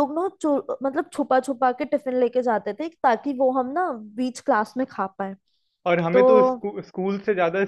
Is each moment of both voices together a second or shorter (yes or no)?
yes